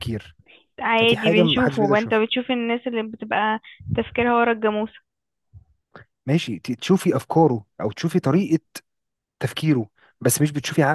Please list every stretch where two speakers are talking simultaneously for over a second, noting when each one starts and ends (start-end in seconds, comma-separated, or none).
1.0-2.2